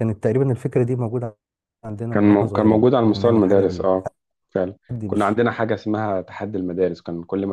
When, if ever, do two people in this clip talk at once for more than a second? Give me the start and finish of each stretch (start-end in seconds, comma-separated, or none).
2.1-4.0